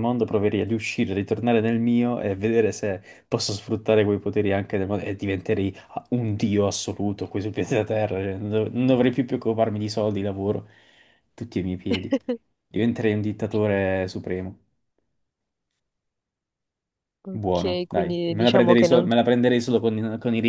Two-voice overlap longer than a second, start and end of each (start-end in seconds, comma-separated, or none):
17.3-19.1